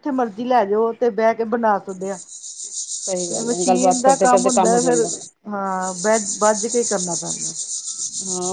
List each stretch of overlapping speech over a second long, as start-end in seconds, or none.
3.3-5.1